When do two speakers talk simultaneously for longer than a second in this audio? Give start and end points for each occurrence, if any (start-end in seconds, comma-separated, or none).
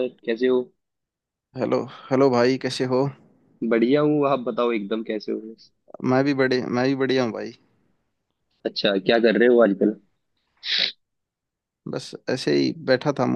none